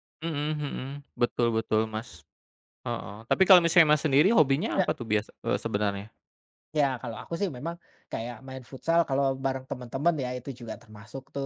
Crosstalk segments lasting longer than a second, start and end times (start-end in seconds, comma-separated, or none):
none